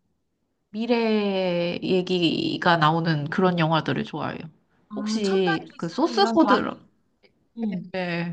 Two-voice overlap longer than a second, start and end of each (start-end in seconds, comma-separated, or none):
5.0-6.5